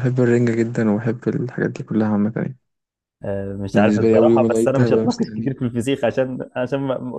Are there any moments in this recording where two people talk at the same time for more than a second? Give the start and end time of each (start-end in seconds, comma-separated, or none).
3.7-5.5